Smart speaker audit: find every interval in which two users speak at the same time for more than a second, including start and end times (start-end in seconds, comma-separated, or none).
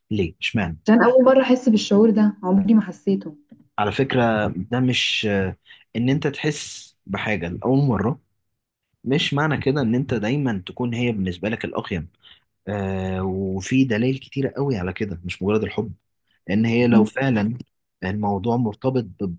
none